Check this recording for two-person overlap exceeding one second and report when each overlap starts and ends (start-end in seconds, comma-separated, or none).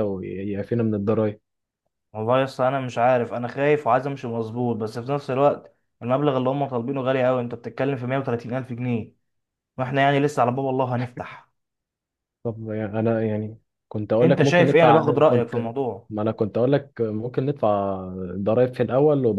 14.2-15.7